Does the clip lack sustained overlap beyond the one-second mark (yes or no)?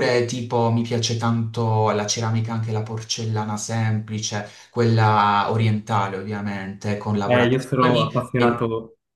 no